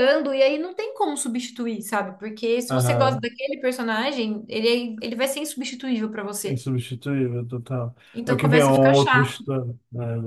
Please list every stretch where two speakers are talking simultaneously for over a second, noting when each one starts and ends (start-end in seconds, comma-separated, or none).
8.1-9.4